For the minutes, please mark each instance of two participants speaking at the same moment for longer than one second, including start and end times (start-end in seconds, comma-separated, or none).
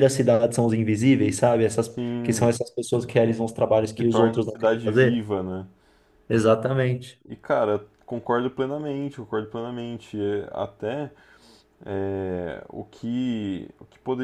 3.9-5.2